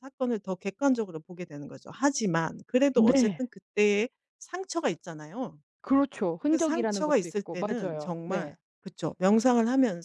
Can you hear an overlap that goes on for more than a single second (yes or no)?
yes